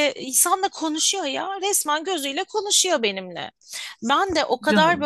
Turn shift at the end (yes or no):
no